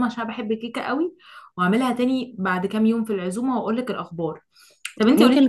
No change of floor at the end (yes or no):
yes